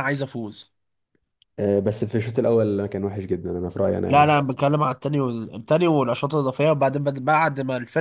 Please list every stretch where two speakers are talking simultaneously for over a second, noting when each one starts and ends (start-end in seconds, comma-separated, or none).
none